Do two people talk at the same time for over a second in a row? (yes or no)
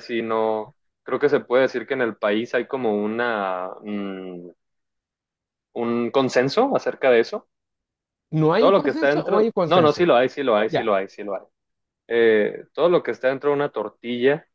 yes